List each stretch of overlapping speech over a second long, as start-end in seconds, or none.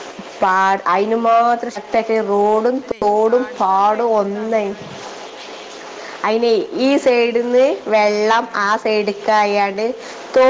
2.8-4.7, 6.8-9.0